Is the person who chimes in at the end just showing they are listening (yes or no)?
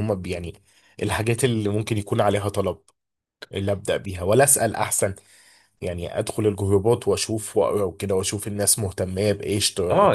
no